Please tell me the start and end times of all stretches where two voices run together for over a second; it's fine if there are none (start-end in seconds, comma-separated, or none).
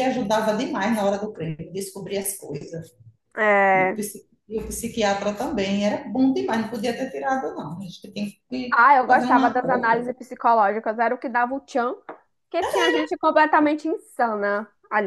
8.7-10.1